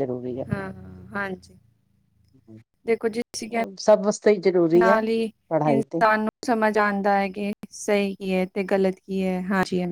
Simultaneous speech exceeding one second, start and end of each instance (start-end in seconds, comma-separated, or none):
none